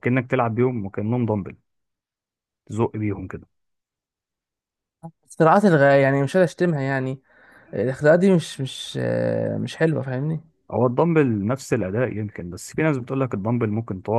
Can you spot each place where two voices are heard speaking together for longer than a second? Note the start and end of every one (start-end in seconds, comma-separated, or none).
none